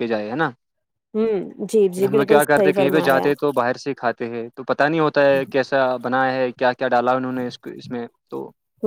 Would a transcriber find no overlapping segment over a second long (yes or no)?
no